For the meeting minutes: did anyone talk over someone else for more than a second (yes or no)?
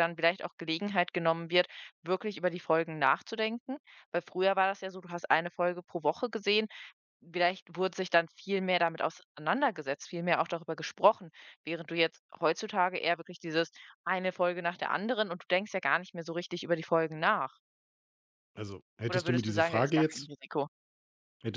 yes